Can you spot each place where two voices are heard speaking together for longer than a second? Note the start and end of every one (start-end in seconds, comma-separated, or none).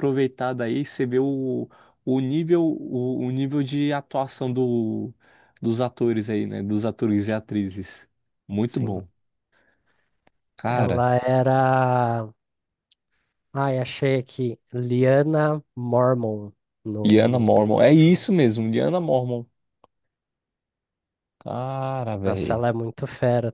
17.0-18.3